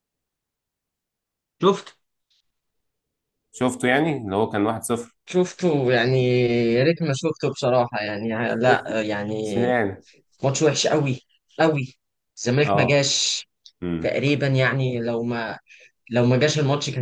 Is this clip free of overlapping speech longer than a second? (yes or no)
yes